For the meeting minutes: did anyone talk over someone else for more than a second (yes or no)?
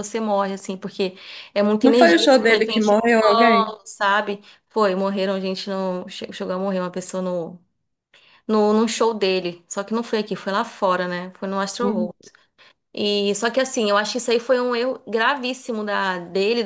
yes